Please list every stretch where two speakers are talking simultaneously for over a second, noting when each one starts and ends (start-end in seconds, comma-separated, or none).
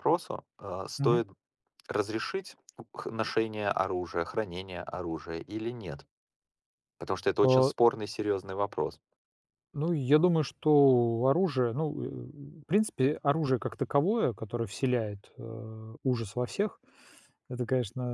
none